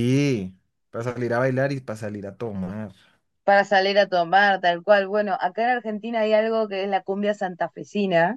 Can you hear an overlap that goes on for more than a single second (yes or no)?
no